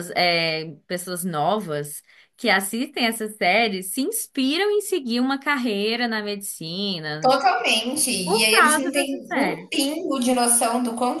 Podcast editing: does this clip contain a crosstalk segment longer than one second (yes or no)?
yes